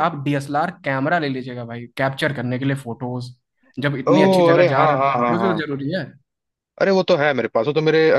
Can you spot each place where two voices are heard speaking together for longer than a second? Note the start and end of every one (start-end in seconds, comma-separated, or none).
4.1-5.7